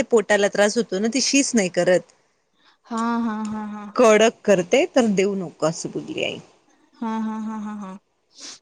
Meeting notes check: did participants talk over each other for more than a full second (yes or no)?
no